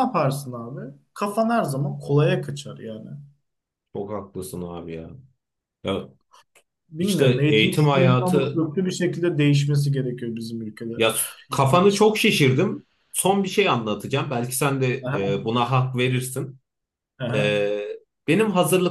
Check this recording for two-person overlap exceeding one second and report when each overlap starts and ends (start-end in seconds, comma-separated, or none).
7.0-8.6